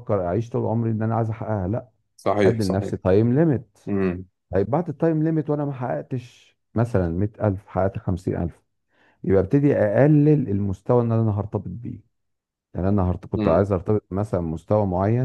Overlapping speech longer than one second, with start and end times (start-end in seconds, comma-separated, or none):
none